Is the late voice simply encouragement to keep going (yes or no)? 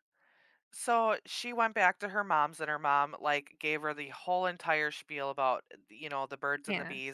yes